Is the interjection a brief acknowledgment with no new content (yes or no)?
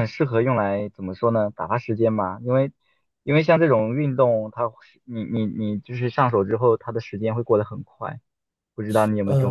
no